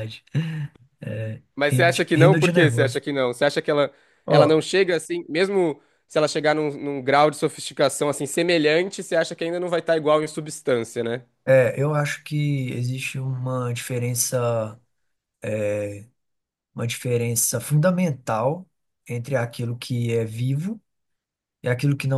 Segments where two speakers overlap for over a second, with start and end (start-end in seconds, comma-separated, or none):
1.6-3.0